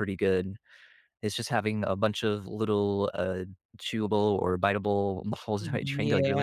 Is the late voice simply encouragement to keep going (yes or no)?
no